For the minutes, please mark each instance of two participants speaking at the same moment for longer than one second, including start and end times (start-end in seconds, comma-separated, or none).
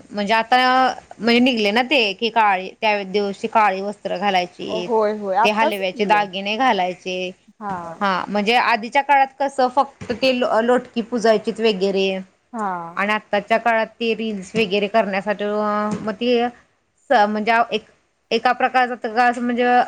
4.9-6.2